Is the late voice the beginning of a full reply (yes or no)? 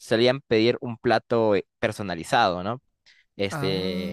no